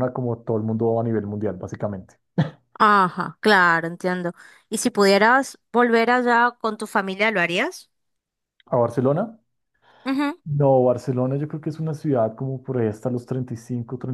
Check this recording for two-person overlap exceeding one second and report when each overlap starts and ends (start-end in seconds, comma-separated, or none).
none